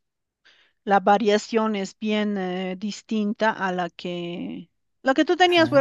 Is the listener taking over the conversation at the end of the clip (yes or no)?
no